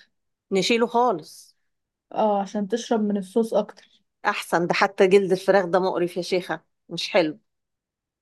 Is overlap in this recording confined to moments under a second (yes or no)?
yes